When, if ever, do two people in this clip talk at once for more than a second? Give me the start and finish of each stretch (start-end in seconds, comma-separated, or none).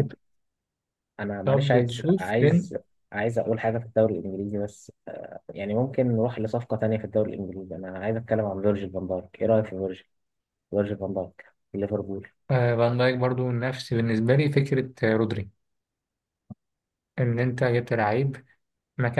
1.4-2.7